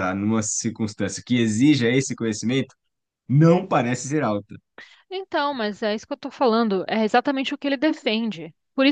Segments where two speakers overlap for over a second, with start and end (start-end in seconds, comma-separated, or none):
none